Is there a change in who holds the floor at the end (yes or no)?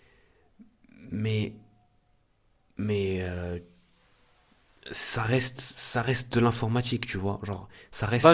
yes